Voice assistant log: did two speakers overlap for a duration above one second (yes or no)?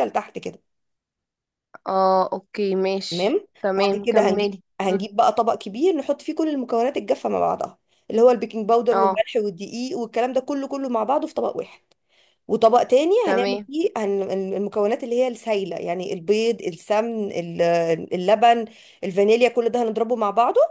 yes